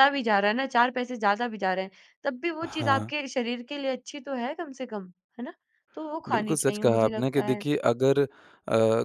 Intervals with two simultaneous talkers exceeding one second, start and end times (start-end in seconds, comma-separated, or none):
6.3-7.6